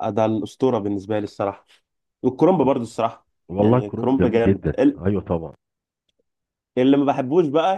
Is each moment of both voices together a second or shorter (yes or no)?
no